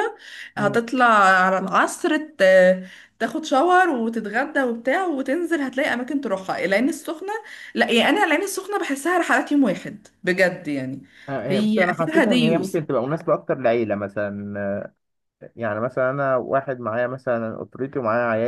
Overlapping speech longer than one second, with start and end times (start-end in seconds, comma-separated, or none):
11.5-12.8